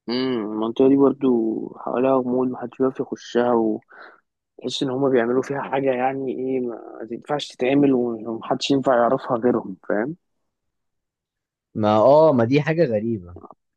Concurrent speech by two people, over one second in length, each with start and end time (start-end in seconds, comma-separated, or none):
none